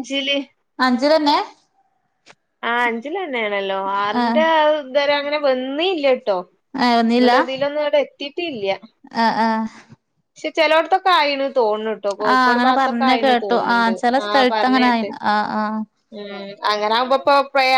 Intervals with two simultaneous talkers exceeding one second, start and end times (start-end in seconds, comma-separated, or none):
12.3-15.1